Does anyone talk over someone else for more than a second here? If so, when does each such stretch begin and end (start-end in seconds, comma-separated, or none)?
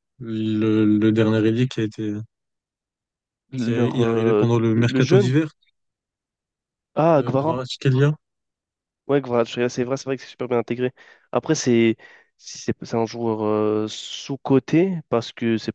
3.6-5.3